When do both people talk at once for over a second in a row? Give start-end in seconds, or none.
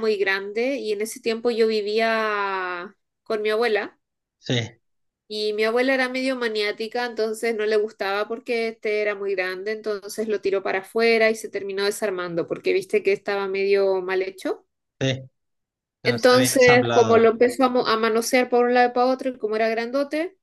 16.0-17.3